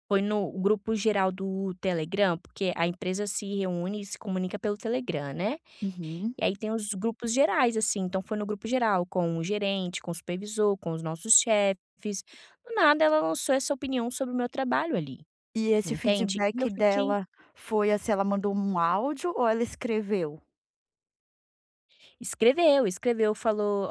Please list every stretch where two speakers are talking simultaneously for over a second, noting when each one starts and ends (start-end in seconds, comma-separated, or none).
15.8-17.1